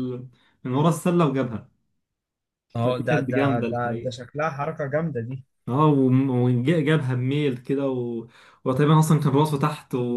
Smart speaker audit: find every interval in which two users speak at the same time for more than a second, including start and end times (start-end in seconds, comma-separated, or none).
2.8-4.1